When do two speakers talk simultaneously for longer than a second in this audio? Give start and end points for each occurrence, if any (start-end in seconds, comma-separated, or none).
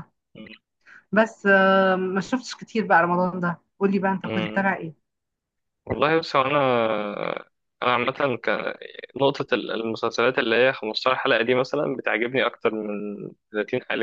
none